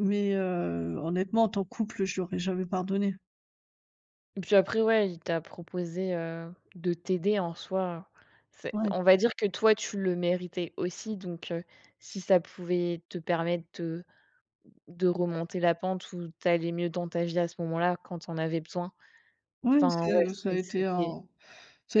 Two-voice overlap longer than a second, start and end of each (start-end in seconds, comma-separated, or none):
19.8-21.1